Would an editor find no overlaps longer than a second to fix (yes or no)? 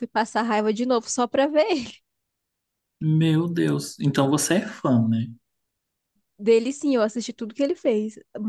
yes